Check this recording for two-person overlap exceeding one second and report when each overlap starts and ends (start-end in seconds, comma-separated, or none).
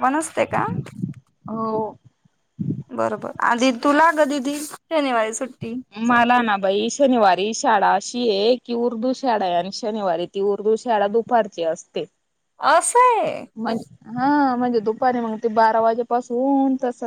none